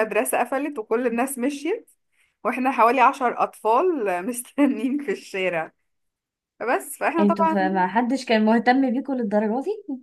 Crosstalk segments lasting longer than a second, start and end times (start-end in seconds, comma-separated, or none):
none